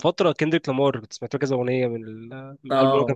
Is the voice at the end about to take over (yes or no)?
yes